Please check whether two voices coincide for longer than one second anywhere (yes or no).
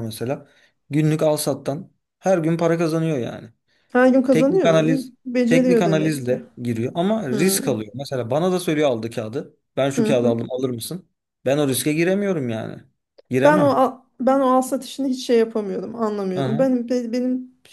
yes